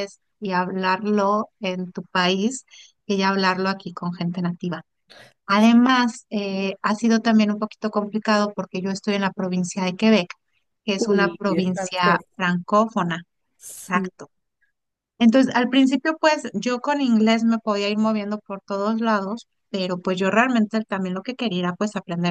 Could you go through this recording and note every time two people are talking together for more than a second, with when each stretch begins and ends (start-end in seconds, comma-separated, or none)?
11.0-12.2